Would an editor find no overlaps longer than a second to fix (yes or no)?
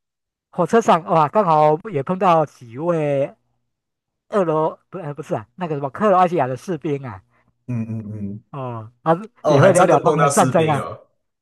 no